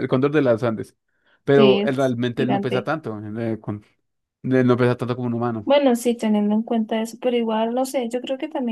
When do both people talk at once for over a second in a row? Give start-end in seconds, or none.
1.5-2.9